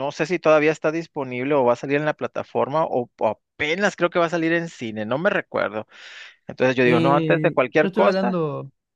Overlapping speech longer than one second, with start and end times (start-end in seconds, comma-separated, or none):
6.8-8.4